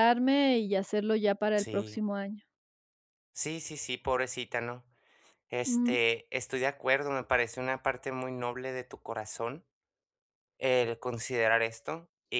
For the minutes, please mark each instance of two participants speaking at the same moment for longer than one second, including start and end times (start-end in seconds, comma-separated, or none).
none